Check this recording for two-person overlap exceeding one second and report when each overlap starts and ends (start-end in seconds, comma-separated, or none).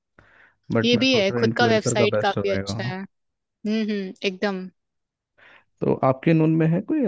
0.8-3.0